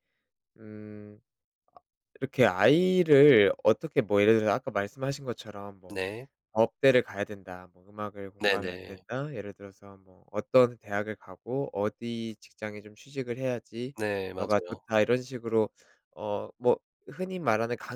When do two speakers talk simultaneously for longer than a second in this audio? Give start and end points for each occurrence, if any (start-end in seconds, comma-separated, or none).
none